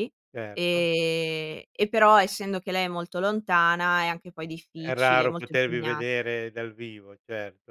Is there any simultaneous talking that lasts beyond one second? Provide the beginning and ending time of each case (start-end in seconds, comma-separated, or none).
4.8-6.0